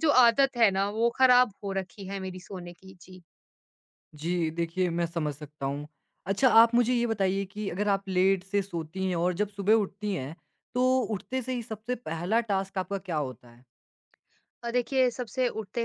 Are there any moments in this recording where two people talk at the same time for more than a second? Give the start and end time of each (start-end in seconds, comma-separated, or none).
none